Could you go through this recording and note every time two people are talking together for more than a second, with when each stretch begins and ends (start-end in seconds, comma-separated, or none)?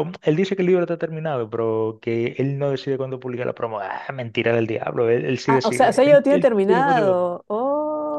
5.5-7.2